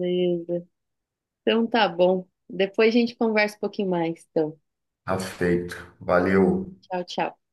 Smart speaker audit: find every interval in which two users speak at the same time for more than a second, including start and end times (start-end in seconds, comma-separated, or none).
none